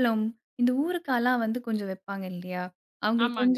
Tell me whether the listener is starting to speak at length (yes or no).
no